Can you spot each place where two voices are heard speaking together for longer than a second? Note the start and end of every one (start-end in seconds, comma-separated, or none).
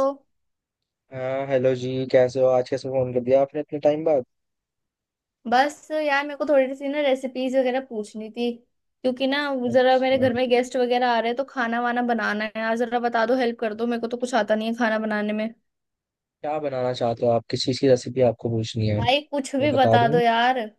19.0-20.2